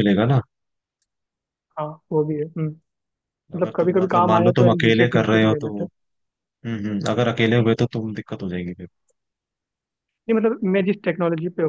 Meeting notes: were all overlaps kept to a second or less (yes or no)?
no